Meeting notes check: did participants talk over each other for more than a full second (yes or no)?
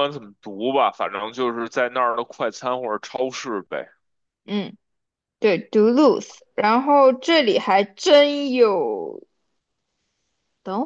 no